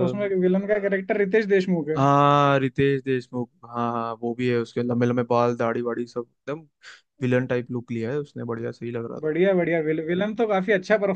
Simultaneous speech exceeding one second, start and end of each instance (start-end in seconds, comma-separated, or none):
none